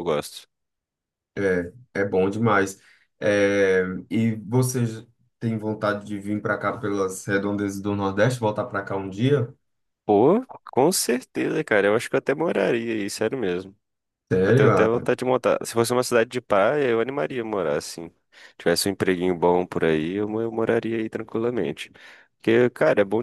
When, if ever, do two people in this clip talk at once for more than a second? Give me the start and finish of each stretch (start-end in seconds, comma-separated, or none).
none